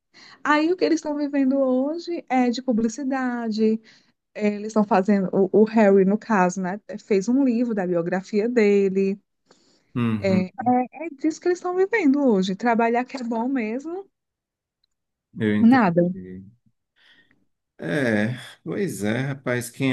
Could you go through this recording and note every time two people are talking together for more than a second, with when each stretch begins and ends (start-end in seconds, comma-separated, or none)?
none